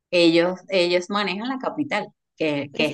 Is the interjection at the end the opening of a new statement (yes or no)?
no